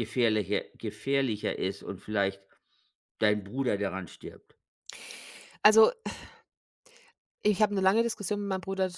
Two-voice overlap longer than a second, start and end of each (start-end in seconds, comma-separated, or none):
none